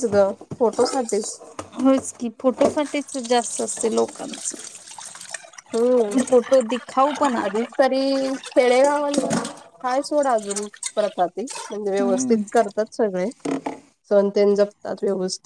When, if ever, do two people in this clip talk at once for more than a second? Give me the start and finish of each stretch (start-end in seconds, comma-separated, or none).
none